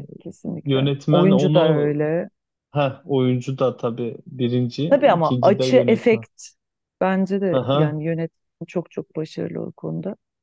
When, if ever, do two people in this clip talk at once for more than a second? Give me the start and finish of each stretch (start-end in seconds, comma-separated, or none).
0.6-2.0, 4.9-6.2